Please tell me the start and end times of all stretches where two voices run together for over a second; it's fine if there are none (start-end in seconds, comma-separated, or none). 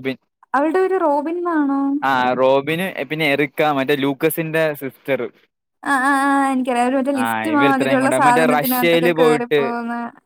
7.5-9.1